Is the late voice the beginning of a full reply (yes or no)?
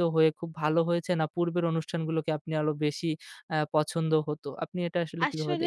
yes